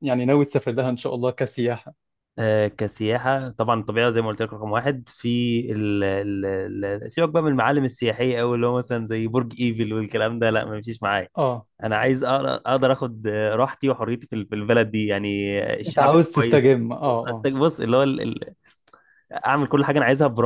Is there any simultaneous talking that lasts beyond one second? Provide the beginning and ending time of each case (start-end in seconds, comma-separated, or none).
15.9-17.5